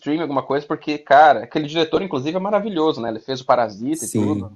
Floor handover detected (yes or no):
yes